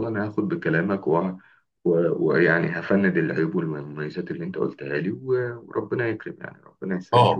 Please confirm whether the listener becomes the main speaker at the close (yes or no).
yes